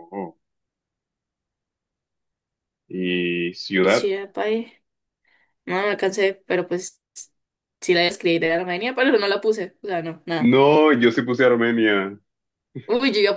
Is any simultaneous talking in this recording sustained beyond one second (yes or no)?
no